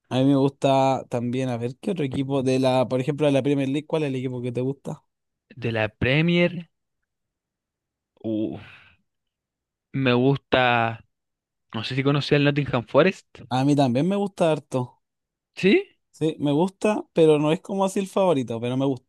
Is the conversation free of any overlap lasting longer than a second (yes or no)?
yes